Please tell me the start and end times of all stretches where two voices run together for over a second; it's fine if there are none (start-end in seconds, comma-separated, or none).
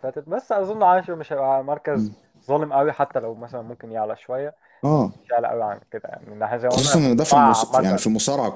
6.7-8.0